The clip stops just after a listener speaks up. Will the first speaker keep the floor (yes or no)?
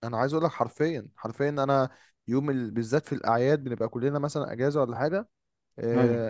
yes